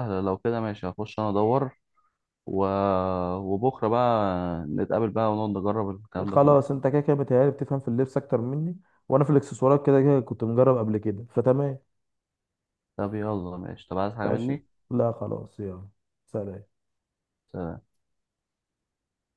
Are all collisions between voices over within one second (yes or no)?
yes